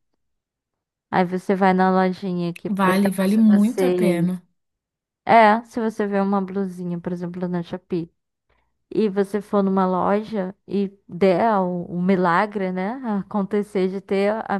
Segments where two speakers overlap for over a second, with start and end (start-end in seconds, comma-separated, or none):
2.8-4.3